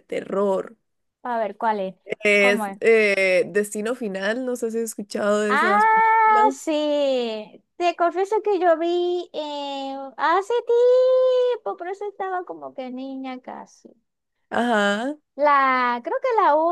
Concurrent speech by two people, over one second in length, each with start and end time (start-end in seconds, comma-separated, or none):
5.5-6.7